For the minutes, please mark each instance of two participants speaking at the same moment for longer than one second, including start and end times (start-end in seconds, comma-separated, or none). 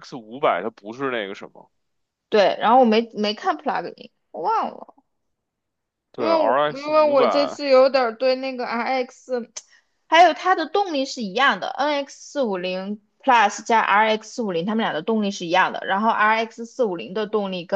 6.2-7.6